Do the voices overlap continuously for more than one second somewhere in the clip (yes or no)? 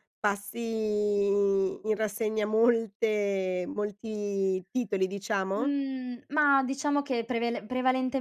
no